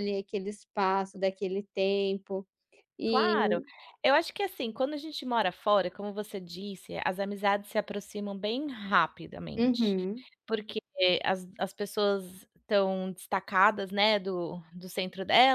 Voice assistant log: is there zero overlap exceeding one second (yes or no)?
yes